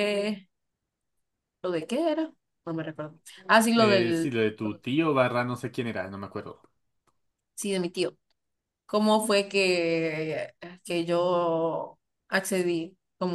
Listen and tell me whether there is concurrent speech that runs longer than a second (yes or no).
no